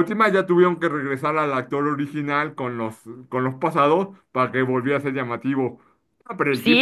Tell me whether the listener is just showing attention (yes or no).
no